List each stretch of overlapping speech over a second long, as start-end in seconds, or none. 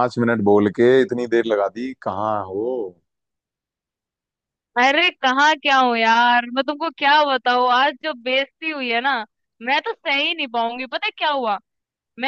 none